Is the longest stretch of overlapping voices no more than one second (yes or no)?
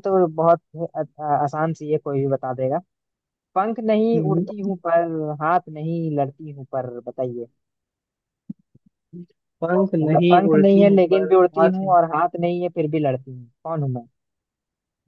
no